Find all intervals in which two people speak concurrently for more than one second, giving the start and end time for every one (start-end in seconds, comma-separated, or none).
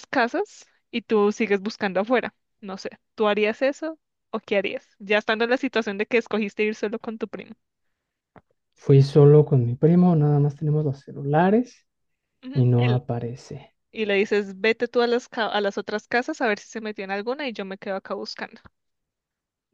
none